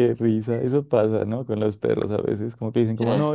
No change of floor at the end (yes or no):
yes